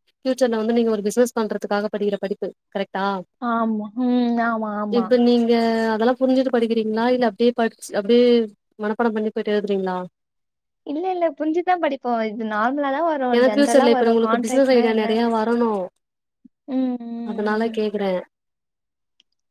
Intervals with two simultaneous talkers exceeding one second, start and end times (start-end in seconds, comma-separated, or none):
13.4-15.2